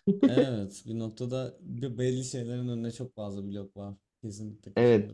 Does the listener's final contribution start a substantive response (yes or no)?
yes